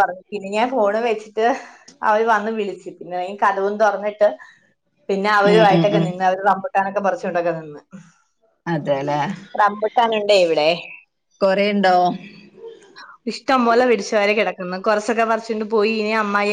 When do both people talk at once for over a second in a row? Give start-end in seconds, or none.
none